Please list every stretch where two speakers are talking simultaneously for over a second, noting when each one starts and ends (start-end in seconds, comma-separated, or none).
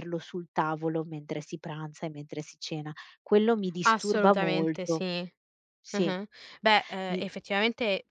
3.8-5.0